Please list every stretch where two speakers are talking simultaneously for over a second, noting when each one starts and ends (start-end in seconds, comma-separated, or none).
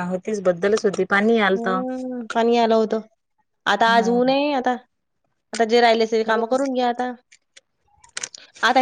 none